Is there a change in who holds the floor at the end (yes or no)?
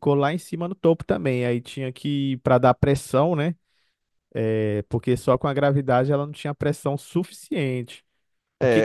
yes